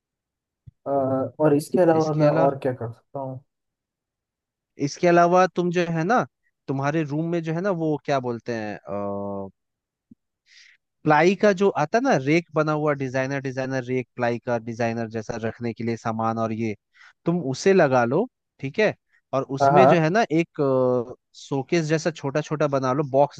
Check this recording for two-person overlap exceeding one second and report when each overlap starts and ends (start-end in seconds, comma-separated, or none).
none